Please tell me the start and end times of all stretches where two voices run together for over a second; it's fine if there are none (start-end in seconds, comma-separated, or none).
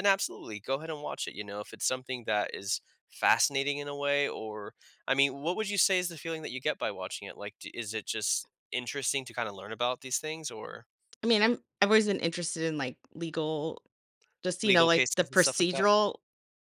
14.6-15.8